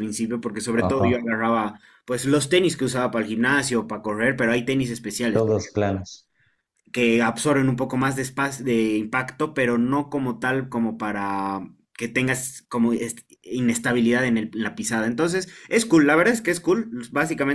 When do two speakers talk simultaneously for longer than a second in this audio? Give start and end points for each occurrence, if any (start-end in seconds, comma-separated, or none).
none